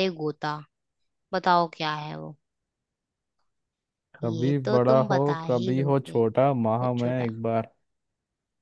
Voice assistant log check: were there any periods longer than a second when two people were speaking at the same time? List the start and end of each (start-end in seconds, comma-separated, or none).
4.2-6.2